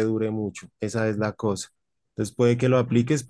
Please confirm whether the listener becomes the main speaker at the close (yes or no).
no